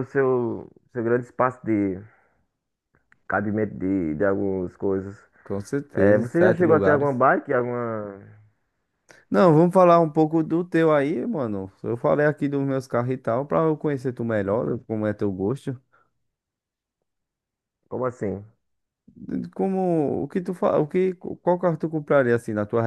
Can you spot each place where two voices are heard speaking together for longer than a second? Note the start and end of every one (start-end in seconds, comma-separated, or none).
5.9-7.2